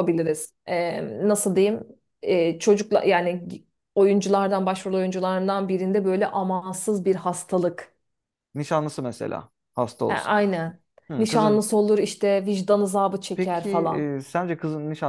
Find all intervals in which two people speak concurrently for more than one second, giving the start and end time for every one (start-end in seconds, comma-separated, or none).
none